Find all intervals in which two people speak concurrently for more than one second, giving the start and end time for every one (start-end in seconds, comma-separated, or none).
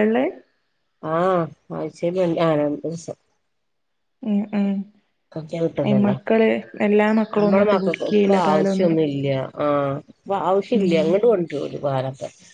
7.3-9.0